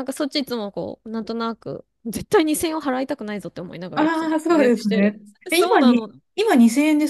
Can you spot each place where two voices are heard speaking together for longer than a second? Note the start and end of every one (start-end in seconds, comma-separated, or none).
3.9-6.1